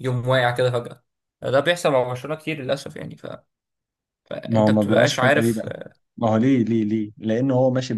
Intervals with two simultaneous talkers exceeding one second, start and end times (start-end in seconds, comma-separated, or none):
4.4-5.7